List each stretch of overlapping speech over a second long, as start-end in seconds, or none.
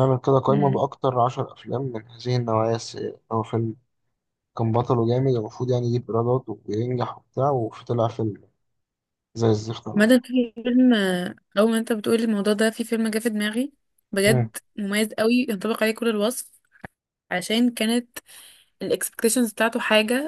none